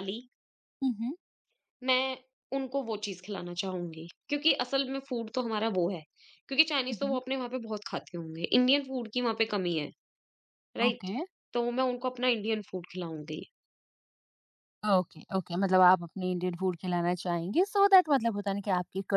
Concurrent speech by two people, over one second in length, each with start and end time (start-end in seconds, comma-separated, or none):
none